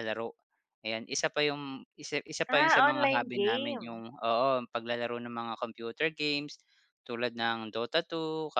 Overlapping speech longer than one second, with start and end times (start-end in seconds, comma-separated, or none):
2.5-4.0